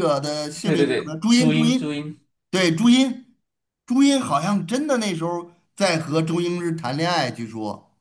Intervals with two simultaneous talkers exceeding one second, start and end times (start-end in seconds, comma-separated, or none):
0.6-2.0